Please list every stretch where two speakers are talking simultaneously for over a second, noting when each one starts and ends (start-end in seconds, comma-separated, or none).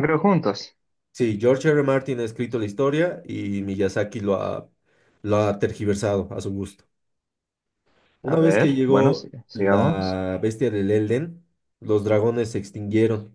8.2-10.2